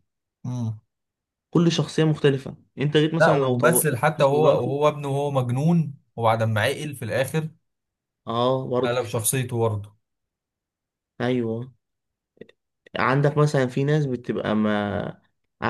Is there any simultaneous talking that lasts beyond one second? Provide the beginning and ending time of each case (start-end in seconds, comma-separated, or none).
3.2-4.8